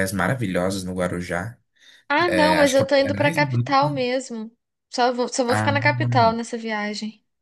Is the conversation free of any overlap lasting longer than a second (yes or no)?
no